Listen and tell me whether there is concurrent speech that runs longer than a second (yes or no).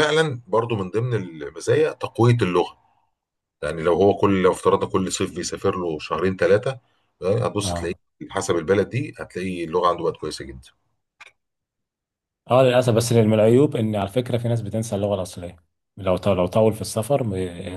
no